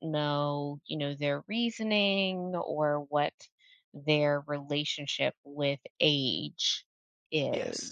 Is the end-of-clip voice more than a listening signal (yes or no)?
yes